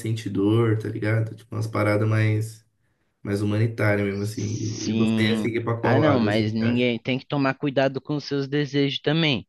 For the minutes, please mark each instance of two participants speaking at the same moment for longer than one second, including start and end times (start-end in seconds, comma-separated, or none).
4.4-7.0